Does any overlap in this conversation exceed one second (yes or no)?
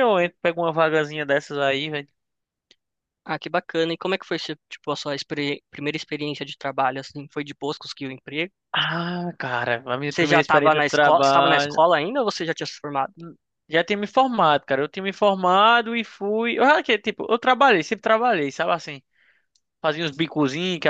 yes